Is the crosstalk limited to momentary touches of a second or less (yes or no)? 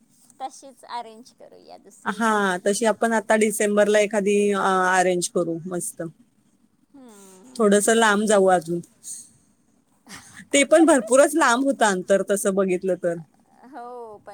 yes